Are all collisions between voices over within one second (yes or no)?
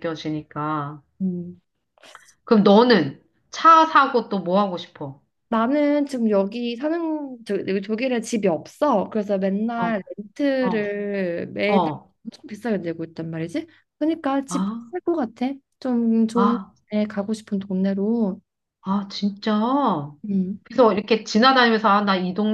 yes